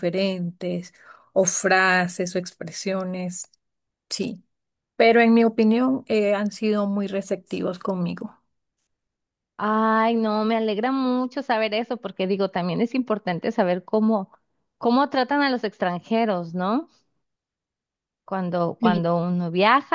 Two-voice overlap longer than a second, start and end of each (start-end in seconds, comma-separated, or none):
none